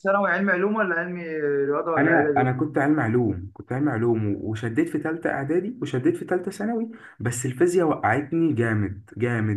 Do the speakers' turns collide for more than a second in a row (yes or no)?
no